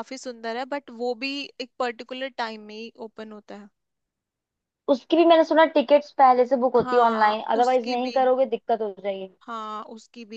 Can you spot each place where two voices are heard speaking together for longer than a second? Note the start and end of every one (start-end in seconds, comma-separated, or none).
6.8-8.2